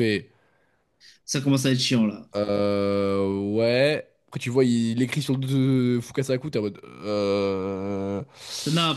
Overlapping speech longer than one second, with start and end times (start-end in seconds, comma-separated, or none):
none